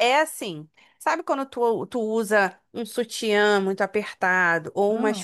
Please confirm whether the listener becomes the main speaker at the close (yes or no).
no